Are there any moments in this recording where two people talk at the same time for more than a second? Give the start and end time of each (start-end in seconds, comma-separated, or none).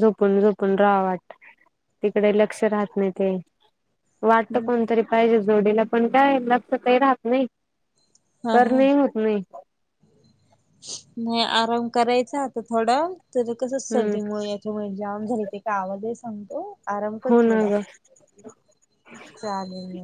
none